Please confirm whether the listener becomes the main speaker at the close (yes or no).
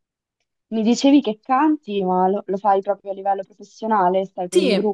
yes